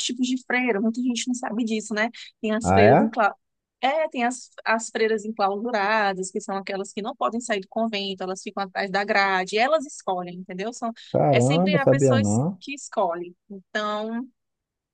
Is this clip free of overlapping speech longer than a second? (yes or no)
no